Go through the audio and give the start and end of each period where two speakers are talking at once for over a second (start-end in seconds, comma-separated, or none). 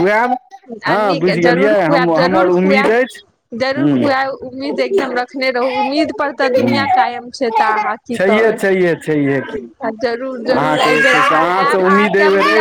0.9-2.9